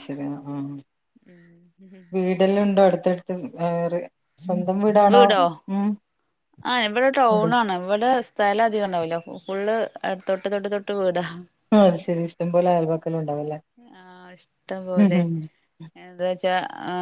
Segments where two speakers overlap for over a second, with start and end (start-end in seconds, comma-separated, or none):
none